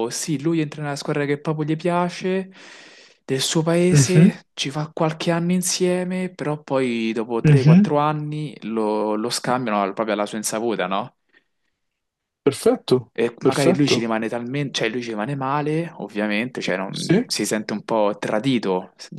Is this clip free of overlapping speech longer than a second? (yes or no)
yes